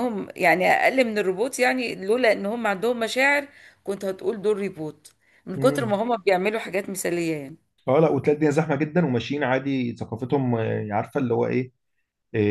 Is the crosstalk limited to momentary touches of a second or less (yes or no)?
yes